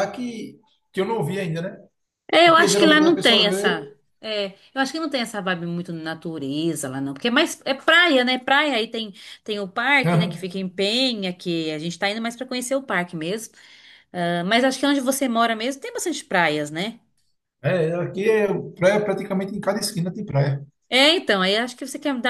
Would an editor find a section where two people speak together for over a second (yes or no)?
yes